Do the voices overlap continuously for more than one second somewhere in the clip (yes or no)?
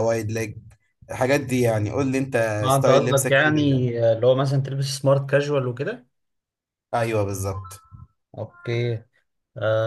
yes